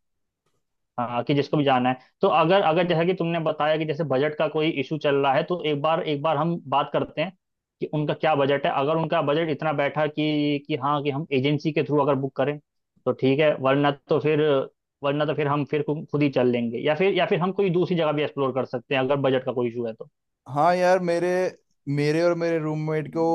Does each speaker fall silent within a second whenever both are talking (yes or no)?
yes